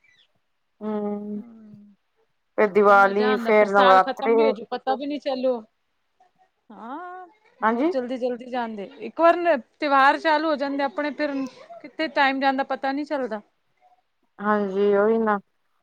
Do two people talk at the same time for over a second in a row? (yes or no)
yes